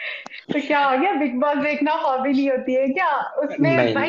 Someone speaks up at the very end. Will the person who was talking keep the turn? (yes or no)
yes